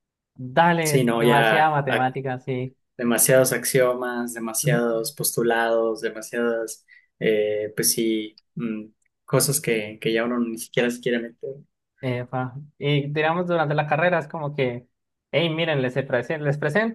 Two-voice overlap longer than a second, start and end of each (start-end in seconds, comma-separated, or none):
0.8-2.0